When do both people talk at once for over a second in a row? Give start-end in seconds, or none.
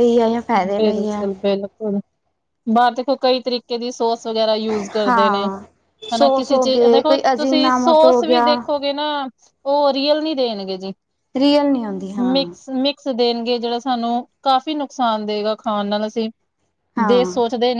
6.2-8.4